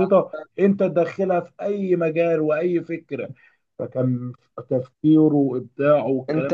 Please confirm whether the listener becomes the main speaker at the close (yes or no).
yes